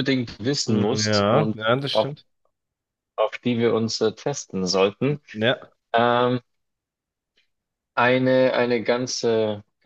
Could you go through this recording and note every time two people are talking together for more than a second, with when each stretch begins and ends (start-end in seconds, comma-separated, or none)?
0.7-2.1